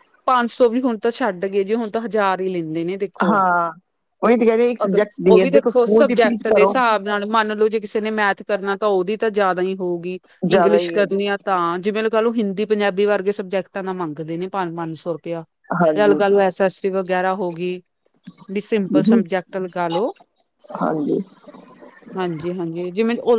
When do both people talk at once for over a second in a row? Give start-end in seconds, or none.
4.8-6.7